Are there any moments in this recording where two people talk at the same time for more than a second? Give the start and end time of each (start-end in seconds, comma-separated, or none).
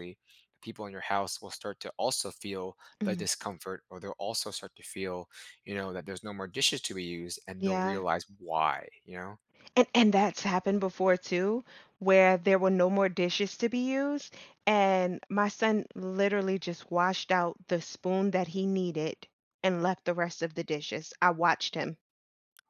none